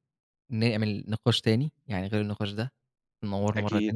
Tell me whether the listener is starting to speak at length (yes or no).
no